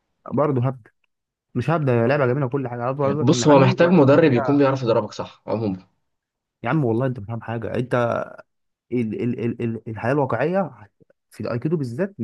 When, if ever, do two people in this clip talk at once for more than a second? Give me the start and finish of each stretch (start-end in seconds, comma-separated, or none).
3.2-4.7